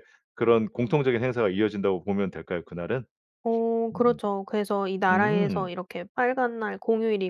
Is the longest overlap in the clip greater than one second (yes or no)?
no